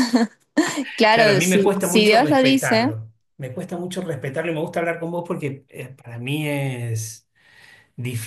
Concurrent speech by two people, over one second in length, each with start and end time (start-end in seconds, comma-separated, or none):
1.1-2.9